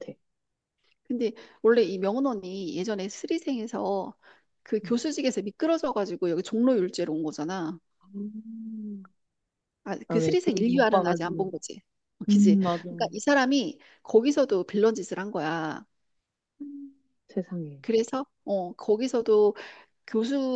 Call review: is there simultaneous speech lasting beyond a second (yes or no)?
yes